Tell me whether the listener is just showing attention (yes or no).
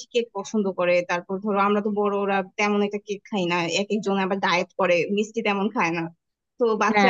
yes